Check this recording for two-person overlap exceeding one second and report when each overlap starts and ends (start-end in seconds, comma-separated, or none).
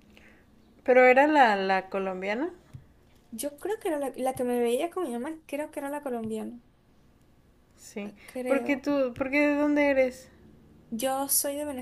none